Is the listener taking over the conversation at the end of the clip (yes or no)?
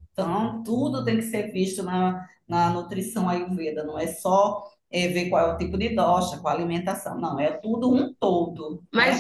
yes